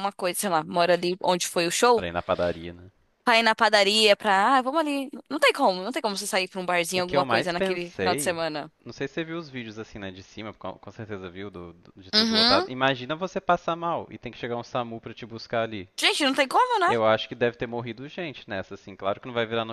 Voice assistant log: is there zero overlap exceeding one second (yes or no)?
no